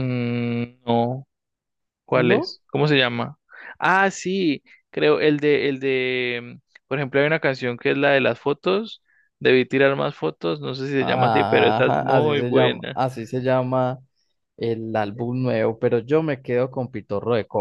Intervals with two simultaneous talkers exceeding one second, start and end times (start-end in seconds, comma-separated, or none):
11.0-13.0